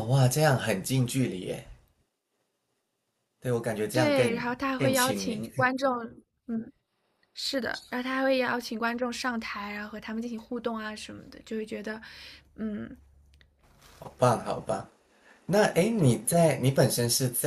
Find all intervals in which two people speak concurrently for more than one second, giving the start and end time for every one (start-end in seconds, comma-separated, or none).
3.9-5.4